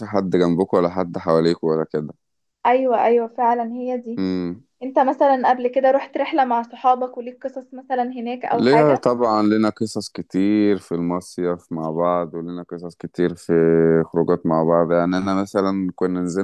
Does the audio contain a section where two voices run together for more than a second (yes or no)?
no